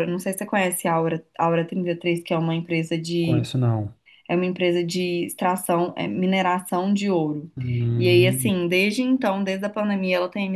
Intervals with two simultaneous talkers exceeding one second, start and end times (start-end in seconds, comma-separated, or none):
none